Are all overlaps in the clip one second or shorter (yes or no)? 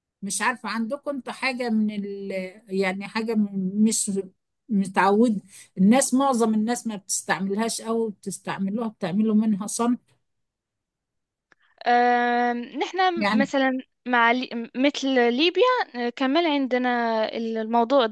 yes